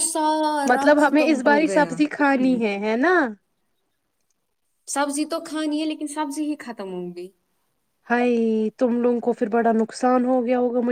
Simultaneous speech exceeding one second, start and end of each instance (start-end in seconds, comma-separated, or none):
0.7-2.8